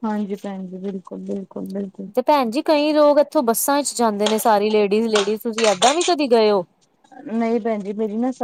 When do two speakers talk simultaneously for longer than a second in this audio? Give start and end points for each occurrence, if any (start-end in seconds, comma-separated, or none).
none